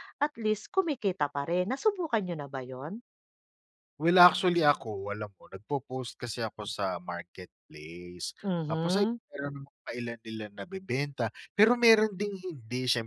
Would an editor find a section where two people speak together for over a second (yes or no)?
no